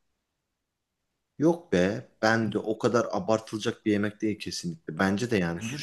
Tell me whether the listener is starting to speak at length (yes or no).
yes